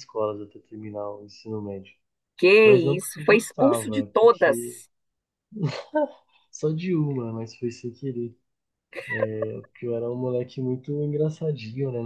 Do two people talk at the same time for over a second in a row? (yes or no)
yes